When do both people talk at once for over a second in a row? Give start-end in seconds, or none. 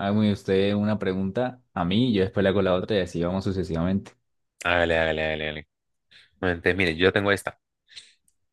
none